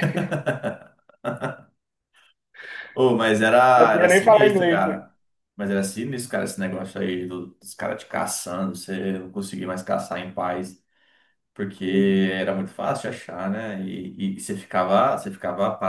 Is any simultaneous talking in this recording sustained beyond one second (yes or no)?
yes